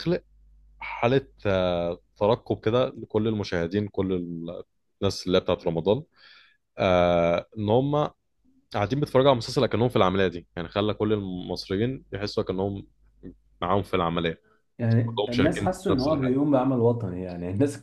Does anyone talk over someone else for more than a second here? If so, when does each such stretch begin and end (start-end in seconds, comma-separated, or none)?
15.0-16.4